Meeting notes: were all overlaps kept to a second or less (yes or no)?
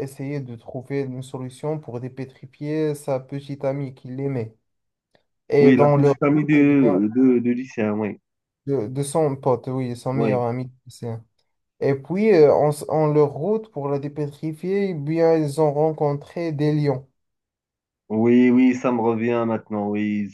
no